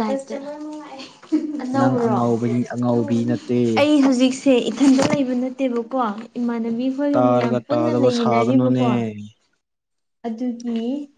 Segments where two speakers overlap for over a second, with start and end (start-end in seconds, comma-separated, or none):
7.2-8.9